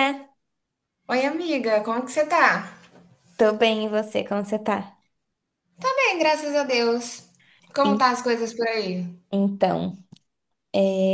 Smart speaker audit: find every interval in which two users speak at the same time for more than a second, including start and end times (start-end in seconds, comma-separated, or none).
none